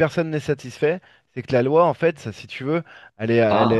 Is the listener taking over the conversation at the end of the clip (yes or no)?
no